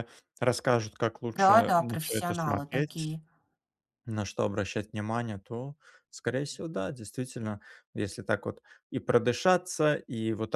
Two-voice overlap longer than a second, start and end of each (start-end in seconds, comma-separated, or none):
1.4-3.2